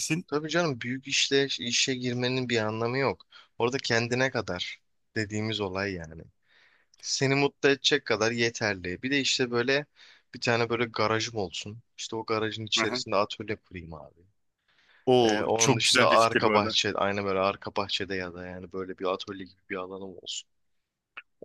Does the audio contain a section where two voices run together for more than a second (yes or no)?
yes